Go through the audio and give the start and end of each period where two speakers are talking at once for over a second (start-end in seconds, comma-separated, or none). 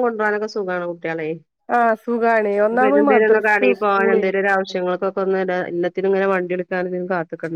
2.8-4.2